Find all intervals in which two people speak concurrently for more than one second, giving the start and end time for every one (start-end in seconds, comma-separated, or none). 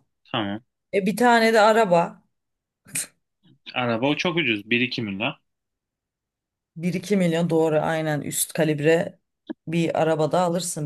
none